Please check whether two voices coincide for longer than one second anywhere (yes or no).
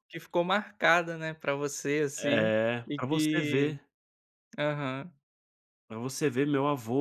yes